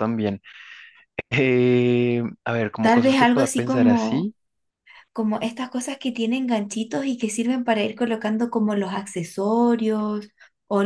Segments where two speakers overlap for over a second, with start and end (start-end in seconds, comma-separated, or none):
2.8-4.3